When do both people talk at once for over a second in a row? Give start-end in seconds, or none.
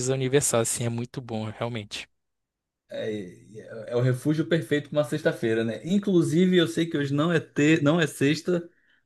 none